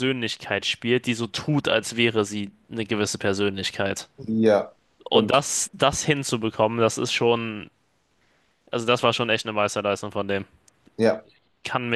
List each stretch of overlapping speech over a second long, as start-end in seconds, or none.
none